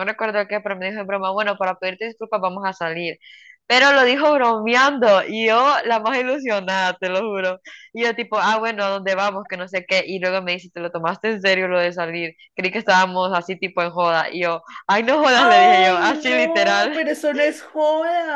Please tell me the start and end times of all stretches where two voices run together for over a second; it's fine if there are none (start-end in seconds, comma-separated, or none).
15.3-17.0